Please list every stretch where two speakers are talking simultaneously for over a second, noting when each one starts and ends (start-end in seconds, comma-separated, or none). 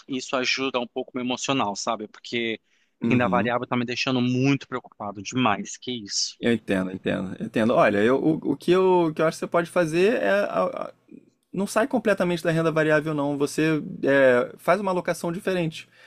none